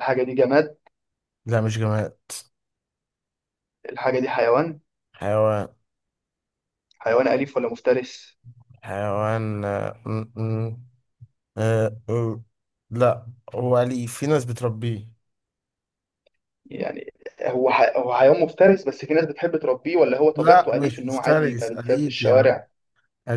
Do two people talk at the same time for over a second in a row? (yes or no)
yes